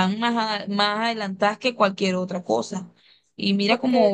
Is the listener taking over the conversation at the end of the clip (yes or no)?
no